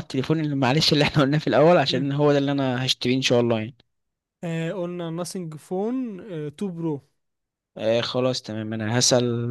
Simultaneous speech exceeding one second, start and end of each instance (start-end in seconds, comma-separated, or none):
none